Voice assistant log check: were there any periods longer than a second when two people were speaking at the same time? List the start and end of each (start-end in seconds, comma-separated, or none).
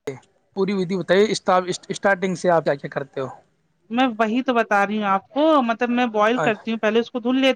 none